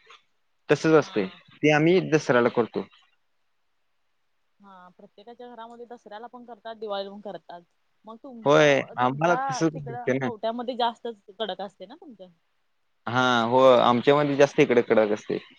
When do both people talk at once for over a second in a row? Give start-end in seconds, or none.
8.4-10.3